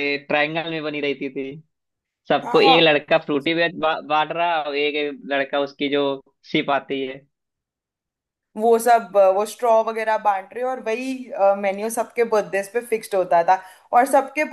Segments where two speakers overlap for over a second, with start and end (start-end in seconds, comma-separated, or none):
none